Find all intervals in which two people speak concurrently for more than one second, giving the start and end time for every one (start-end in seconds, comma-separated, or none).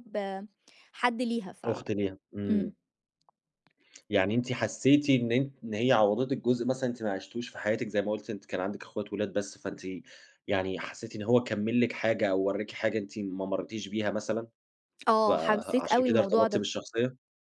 15.3-16.6